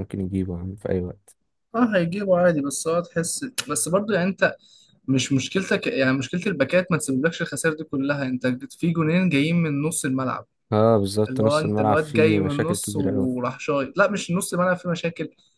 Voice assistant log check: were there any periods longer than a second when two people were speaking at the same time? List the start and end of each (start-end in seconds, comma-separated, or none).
11.3-13.3